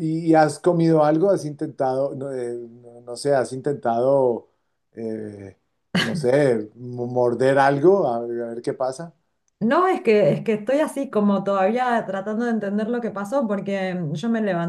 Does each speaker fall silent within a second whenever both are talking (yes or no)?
yes